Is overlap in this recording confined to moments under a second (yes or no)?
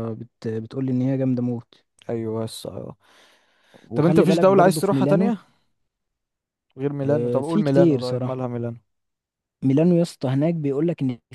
no